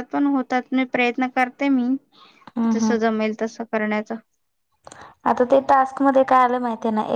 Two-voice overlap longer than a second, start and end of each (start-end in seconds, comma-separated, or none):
none